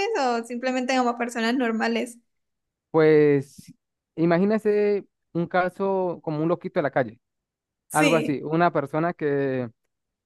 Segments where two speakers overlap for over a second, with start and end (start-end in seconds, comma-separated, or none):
none